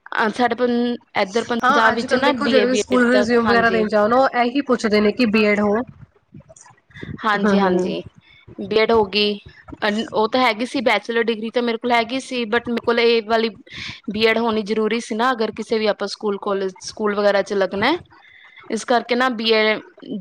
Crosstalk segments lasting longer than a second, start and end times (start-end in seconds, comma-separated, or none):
1.6-3.8